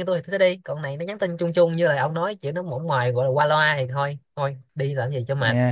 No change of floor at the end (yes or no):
no